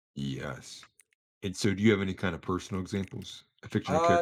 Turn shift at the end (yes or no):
yes